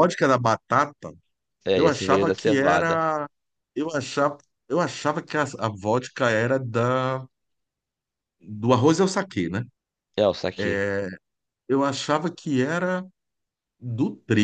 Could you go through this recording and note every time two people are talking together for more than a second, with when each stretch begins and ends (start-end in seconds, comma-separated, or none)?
1.7-3.0